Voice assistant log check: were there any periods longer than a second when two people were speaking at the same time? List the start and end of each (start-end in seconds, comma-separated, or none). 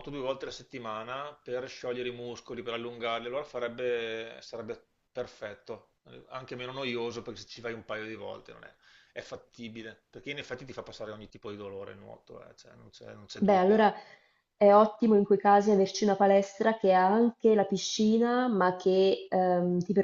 none